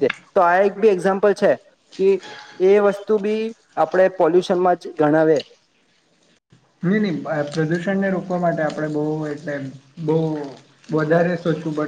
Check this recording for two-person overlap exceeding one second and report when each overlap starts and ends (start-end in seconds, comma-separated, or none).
none